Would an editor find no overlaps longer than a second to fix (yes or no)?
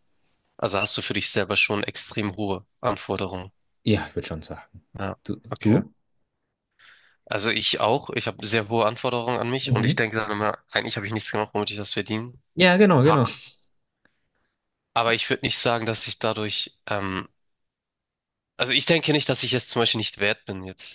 yes